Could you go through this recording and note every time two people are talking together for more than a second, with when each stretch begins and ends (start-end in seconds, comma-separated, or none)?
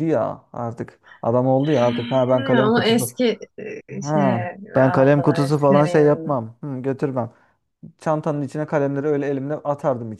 1.8-3.1, 4.0-6.4